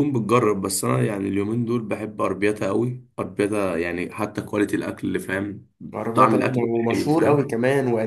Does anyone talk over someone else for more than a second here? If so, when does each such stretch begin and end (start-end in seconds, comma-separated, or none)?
6.1-7.5